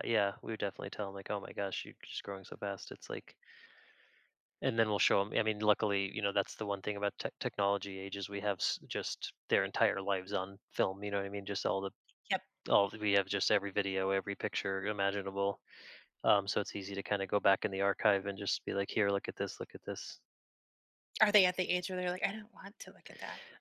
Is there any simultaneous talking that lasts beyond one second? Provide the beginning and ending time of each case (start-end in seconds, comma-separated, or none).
none